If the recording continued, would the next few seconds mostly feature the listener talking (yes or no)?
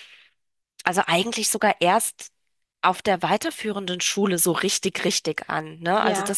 no